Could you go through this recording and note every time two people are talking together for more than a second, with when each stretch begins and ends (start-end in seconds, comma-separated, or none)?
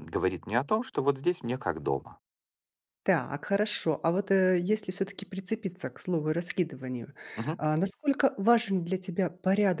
none